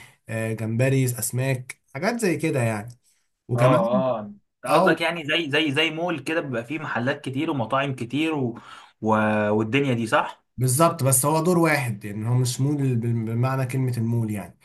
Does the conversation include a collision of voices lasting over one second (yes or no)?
no